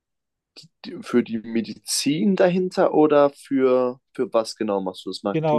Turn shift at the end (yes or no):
yes